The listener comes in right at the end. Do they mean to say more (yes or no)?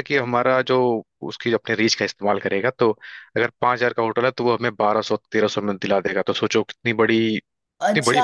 yes